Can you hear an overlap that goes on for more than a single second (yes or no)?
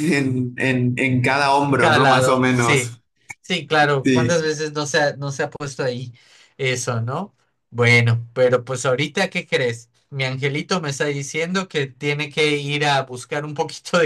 yes